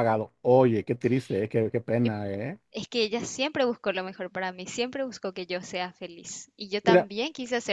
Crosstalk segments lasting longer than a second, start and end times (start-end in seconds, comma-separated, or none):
none